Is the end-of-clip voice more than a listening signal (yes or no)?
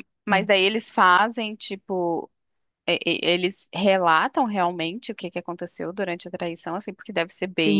yes